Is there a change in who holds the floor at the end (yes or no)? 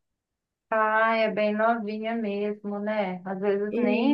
no